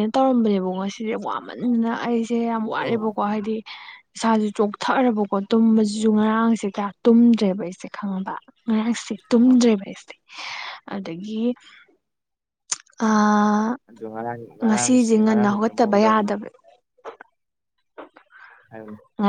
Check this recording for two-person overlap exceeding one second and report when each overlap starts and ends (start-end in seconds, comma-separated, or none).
14.6-16.3